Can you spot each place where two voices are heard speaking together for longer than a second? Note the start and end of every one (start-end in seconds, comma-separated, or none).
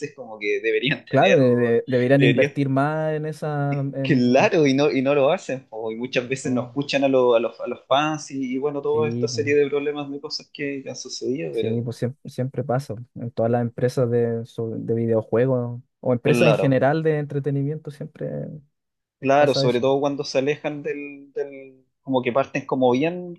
none